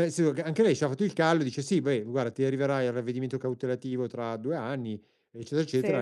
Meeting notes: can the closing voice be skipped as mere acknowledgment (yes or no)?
yes